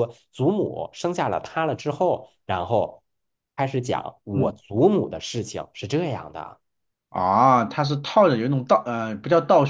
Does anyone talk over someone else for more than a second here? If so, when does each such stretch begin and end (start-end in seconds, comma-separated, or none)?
none